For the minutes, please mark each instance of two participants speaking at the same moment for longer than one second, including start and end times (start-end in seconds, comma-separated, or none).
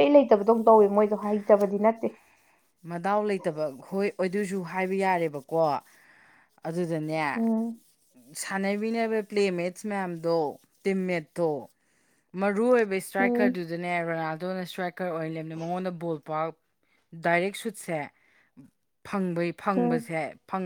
none